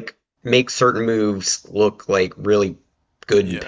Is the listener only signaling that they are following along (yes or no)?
yes